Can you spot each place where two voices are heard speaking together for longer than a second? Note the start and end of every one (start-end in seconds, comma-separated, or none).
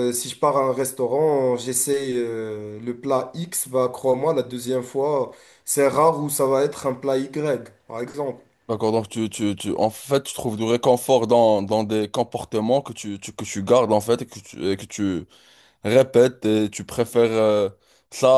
none